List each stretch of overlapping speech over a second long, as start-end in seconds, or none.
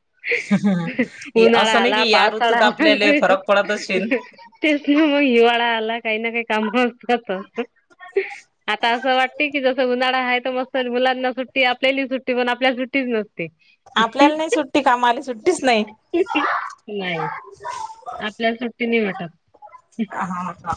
1.6-3.3